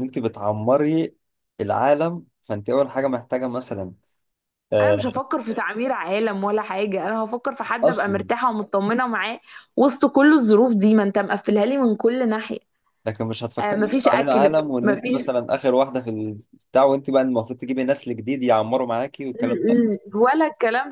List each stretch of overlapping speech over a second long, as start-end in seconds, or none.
13.6-15.2